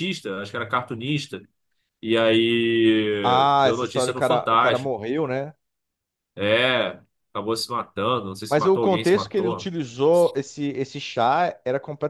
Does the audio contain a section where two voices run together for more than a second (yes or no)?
yes